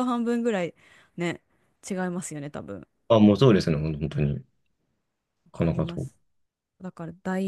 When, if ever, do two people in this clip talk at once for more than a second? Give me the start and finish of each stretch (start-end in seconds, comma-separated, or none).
none